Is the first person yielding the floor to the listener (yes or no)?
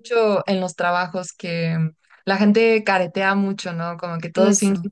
no